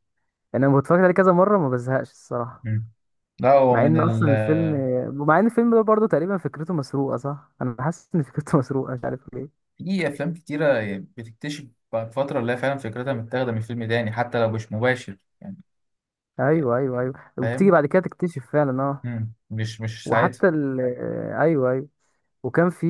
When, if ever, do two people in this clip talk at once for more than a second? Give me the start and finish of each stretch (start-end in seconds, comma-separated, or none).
none